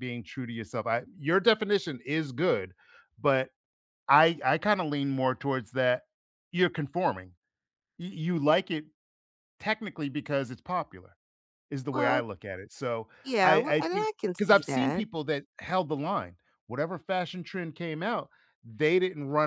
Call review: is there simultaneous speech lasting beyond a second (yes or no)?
yes